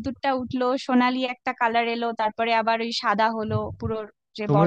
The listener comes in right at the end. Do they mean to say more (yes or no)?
yes